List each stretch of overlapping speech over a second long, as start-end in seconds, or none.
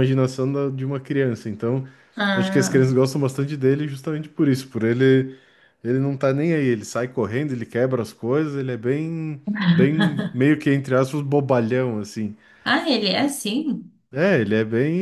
none